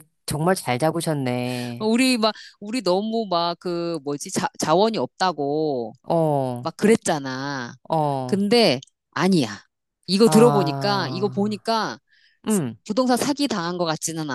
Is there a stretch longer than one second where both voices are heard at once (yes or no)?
yes